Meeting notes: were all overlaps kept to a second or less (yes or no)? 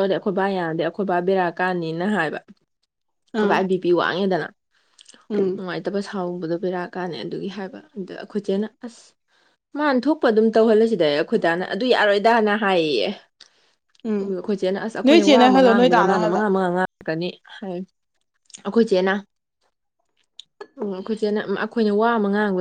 no